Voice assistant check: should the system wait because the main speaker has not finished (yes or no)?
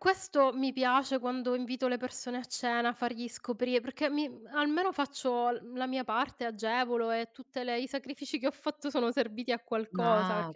no